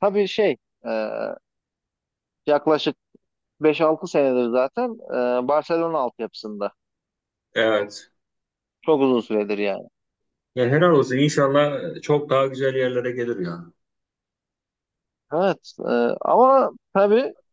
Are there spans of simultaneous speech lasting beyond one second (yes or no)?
no